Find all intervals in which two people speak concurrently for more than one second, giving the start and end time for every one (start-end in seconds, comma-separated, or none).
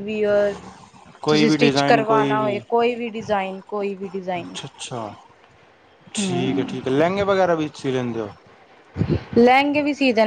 1.3-2.6